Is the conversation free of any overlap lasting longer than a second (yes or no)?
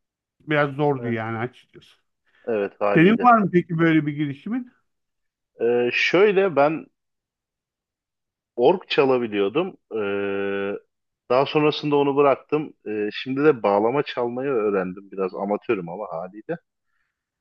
yes